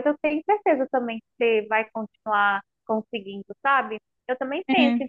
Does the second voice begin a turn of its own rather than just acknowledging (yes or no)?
no